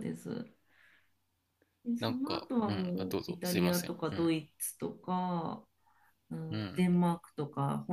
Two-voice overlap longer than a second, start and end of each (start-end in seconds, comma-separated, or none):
2.0-4.3